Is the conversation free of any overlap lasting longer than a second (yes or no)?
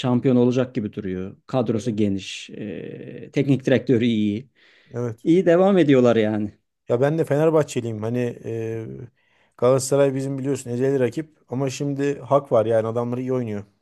yes